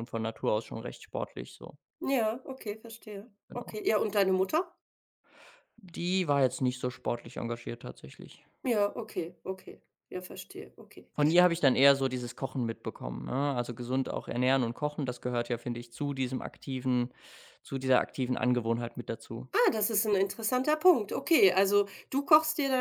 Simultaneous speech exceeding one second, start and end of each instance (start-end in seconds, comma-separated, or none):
none